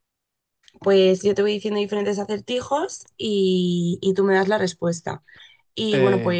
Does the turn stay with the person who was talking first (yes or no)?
yes